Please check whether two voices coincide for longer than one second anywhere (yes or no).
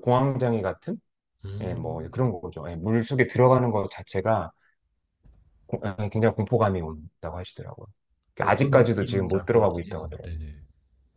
yes